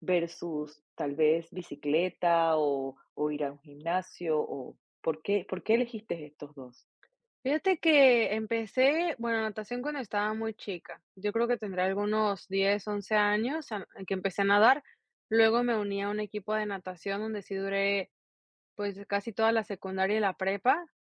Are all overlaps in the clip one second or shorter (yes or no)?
yes